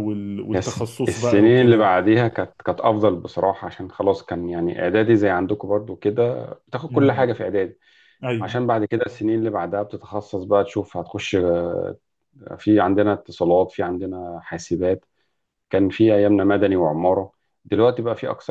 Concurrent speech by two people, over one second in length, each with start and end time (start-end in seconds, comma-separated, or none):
0.5-1.9